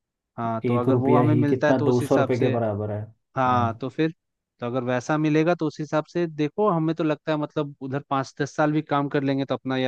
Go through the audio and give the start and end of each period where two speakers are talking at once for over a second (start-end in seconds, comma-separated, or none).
0.7-2.5